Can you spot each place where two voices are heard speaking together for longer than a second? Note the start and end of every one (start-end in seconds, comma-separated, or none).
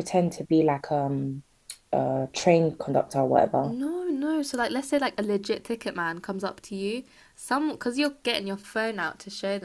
none